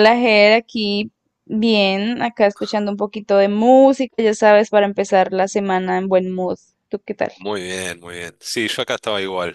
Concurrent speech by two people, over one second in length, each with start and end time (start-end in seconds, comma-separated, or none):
none